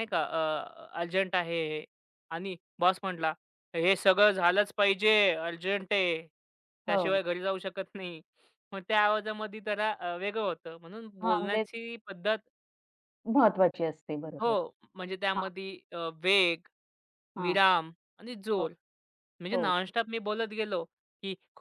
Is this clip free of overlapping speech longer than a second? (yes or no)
yes